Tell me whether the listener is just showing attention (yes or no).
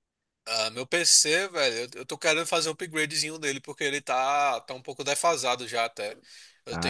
yes